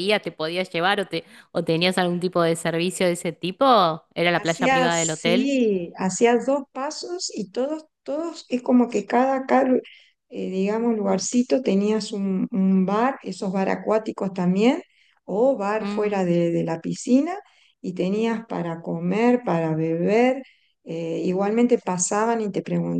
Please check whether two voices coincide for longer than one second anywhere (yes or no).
yes